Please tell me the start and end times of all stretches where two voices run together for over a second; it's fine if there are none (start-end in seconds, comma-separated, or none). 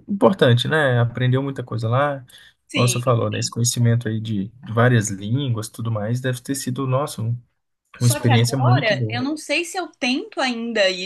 8.0-9.2